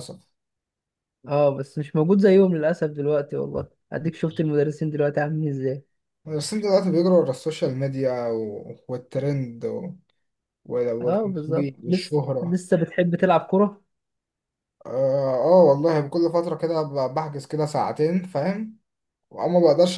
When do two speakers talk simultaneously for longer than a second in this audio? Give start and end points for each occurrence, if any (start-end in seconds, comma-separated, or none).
11.0-12.6